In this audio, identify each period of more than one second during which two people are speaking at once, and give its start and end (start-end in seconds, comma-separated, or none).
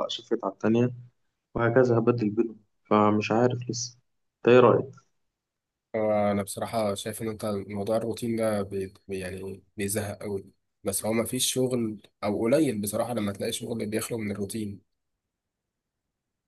none